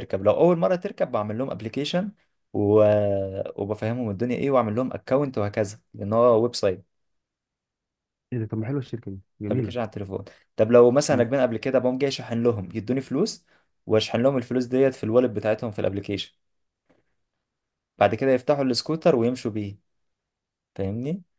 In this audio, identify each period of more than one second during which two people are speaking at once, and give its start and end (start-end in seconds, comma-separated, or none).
none